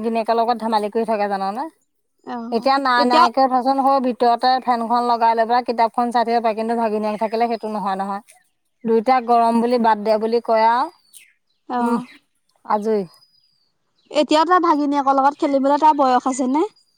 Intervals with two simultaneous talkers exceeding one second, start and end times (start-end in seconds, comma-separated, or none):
none